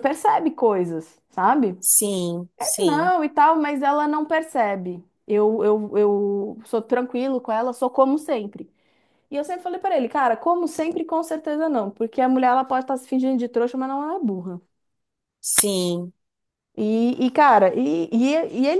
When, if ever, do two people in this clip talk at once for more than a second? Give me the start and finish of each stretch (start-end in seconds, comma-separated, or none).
none